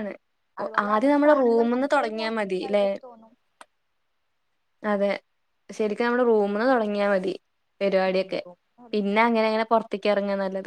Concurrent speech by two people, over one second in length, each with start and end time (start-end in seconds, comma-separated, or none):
0.6-2.9